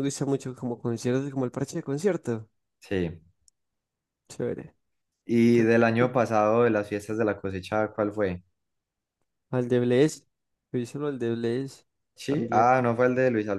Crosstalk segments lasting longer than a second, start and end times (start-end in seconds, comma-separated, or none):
none